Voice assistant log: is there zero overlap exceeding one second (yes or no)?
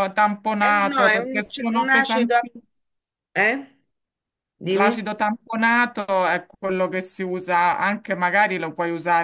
no